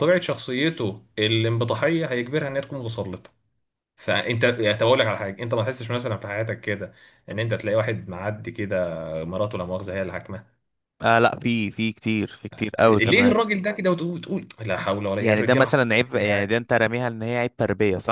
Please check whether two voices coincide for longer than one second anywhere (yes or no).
yes